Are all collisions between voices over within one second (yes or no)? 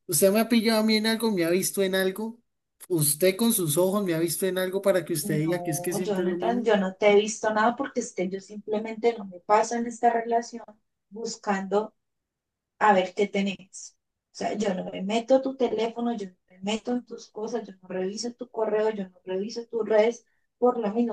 no